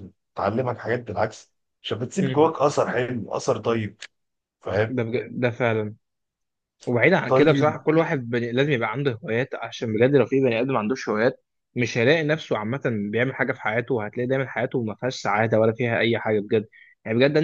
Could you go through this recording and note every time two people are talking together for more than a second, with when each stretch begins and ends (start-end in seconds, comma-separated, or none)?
none